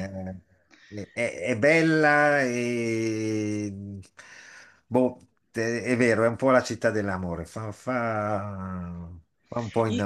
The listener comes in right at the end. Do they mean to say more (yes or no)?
yes